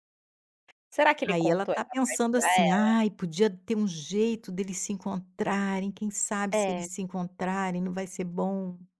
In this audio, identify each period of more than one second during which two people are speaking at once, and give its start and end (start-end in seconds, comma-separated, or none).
1.3-3.0